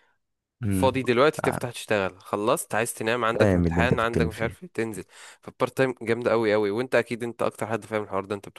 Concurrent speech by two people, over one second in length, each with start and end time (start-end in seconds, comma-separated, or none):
3.2-4.6